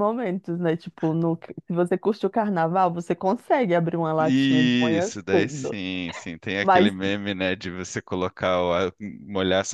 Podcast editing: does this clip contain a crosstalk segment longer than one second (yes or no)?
yes